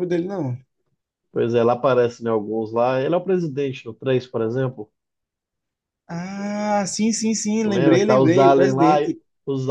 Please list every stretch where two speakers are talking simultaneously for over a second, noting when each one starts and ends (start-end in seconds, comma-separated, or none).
7.6-9.2